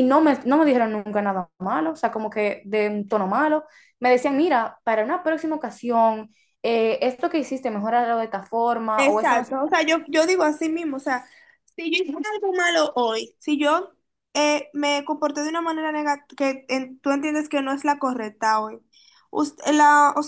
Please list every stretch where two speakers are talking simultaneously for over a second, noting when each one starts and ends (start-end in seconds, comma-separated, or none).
none